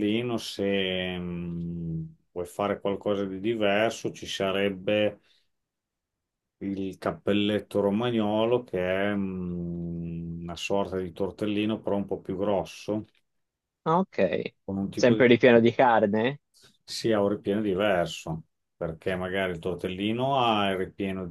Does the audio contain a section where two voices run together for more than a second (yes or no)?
no